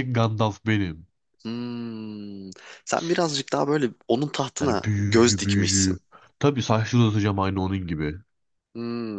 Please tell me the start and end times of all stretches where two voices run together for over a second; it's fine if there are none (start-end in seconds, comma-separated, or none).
4.6-6.0